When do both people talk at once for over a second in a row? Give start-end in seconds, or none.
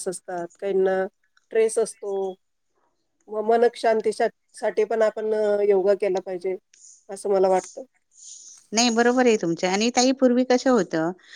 none